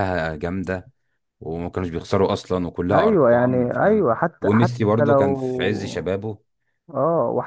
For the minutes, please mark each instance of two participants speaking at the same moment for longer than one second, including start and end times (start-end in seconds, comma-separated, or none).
2.9-6.1